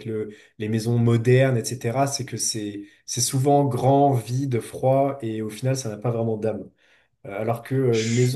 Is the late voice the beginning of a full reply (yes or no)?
no